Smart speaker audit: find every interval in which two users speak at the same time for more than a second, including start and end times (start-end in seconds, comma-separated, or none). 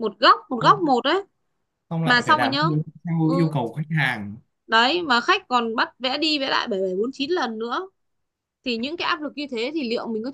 none